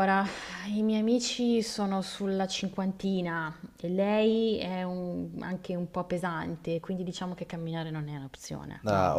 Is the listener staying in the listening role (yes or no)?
no